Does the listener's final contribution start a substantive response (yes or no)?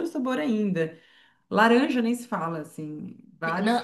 yes